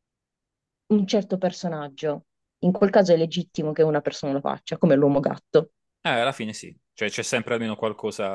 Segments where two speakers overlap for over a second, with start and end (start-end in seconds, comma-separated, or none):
none